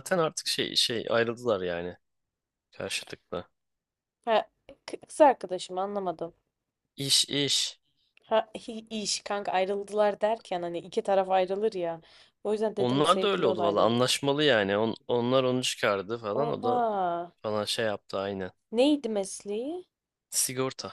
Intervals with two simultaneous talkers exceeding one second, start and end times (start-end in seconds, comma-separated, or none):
12.8-14.0